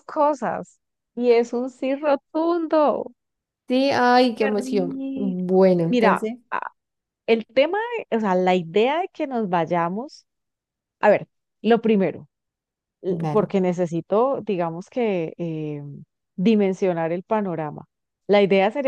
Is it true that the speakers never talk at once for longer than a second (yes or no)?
no